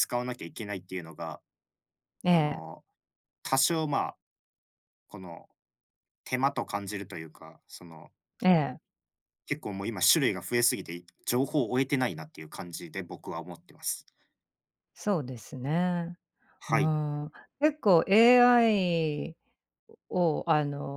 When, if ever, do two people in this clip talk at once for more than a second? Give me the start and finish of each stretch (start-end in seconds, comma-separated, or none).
none